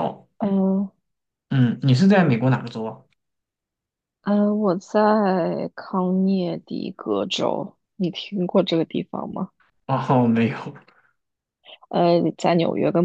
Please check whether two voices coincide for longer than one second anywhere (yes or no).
no